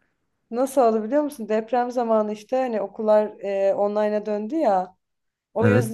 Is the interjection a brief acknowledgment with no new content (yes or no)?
yes